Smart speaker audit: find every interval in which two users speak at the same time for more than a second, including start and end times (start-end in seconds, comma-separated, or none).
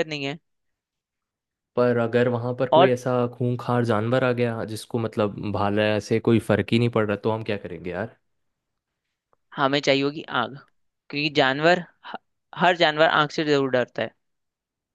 none